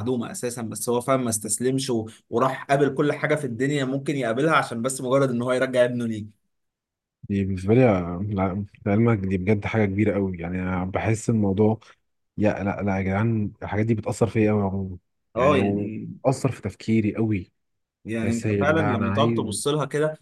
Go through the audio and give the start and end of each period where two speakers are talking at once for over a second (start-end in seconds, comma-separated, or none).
18.2-19.5